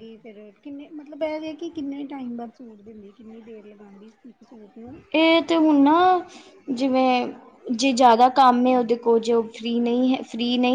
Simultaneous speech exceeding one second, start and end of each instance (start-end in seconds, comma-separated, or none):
none